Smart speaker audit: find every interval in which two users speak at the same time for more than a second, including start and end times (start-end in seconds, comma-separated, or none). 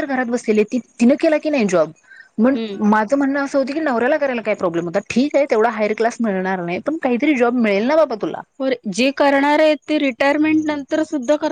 none